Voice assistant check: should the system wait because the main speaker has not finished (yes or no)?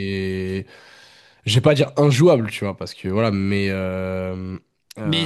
no